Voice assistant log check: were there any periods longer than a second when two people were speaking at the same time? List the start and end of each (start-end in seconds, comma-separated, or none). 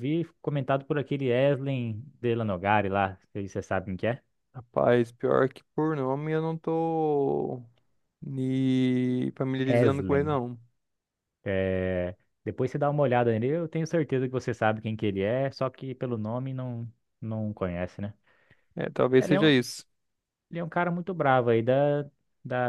none